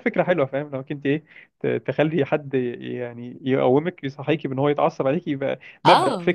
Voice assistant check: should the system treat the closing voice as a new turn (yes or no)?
yes